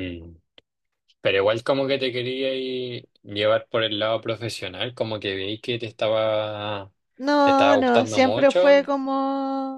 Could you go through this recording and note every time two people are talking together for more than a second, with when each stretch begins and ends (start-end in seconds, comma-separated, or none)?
7.4-8.9